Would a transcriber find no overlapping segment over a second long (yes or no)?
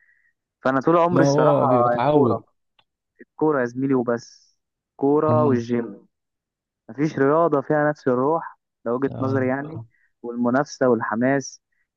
no